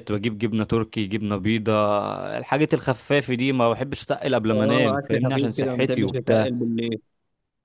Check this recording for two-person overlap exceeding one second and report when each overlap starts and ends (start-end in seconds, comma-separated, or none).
4.5-6.6